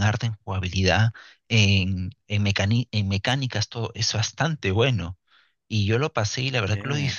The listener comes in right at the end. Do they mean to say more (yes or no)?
no